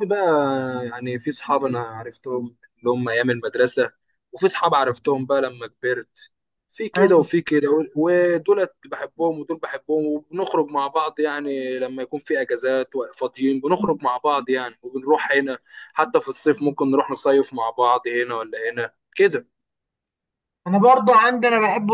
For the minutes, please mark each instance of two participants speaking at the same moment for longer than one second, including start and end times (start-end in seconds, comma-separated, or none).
none